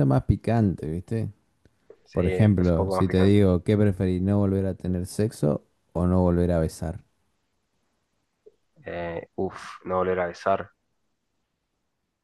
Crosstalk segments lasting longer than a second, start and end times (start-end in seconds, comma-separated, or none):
2.1-3.4